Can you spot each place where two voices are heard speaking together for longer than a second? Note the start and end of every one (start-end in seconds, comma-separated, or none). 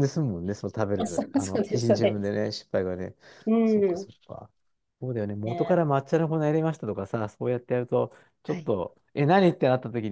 0.9-2.3